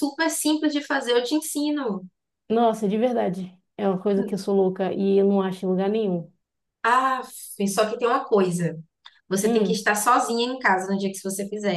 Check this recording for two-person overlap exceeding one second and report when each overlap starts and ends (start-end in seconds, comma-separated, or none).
none